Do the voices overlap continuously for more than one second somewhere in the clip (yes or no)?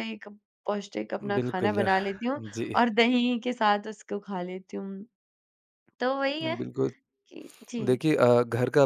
no